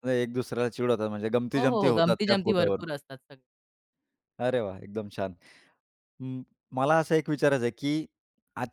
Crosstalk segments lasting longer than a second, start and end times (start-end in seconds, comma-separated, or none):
1.6-2.9